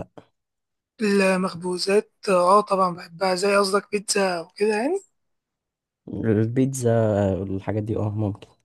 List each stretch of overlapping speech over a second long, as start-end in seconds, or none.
none